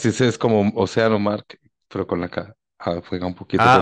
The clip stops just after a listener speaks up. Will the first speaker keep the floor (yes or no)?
no